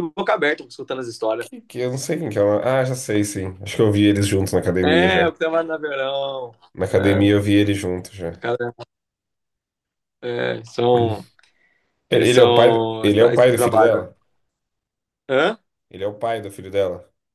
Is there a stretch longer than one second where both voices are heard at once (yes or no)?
yes